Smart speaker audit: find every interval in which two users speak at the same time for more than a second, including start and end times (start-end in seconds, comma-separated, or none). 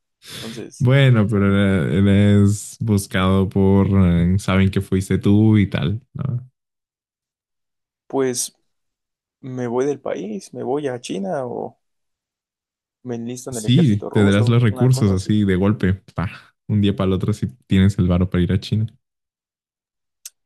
13.5-15.4